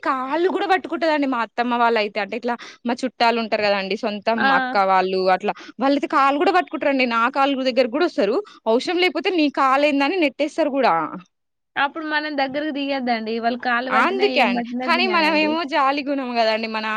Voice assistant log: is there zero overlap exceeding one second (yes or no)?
yes